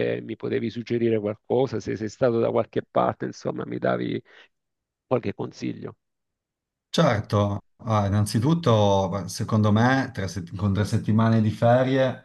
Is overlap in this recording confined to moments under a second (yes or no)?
yes